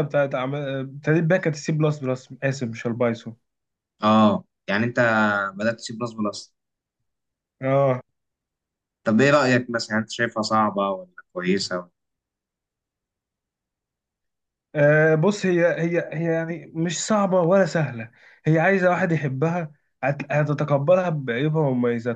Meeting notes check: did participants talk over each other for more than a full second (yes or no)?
no